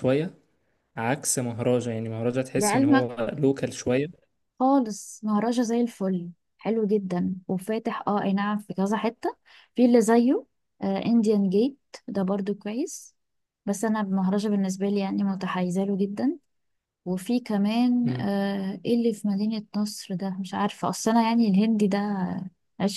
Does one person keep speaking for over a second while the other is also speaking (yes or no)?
no